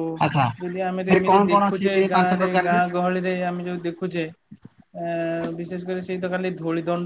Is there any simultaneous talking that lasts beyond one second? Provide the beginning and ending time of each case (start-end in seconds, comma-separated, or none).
0.6-2.8